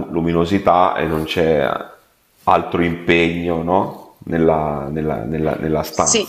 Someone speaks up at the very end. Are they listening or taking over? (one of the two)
listening